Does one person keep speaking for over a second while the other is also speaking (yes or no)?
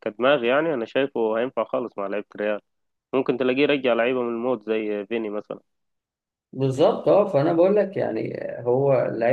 no